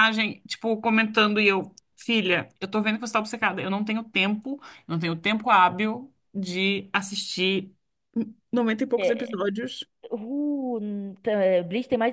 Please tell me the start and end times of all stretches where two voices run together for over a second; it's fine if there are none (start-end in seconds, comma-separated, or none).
none